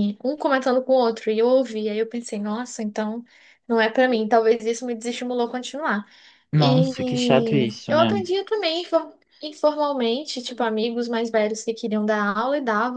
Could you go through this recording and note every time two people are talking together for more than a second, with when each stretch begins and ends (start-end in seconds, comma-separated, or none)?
6.6-8.1